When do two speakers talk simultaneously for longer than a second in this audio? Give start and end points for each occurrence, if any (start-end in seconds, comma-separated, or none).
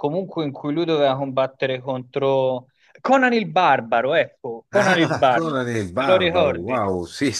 4.7-6.8